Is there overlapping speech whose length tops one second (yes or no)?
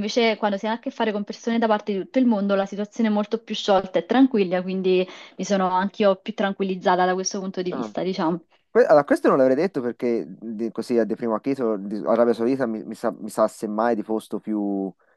no